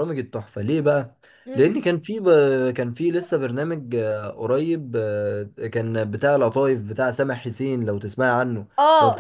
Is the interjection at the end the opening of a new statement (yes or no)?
yes